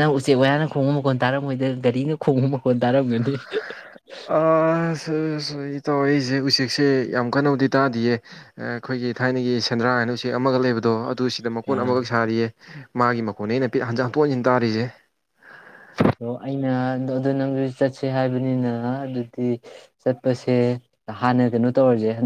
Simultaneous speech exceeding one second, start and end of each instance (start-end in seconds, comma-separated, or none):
none